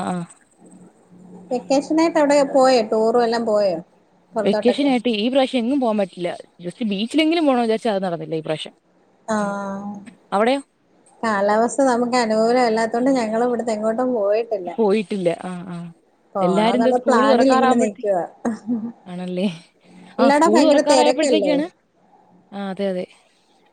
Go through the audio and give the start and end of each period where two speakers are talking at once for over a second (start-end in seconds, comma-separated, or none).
16.5-18.0, 20.2-21.5